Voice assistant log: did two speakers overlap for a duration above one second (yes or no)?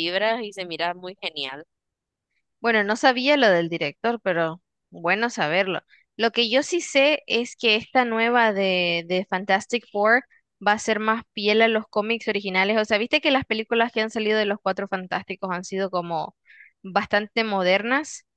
no